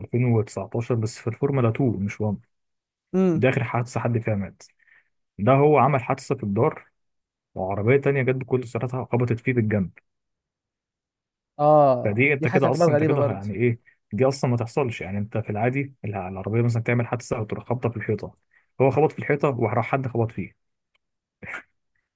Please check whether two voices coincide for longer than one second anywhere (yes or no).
yes